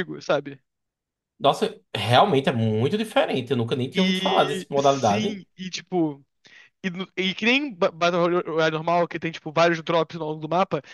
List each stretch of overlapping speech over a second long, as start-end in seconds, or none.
3.9-5.4